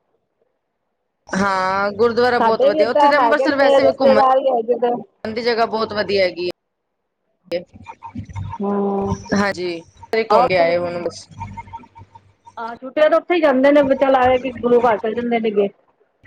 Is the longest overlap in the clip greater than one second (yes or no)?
yes